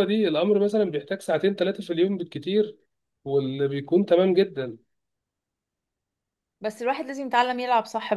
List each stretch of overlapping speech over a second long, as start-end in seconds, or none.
none